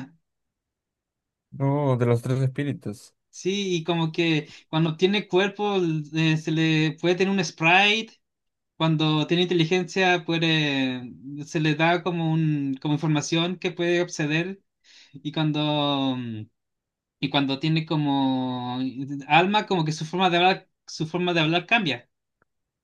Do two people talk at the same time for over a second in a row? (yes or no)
no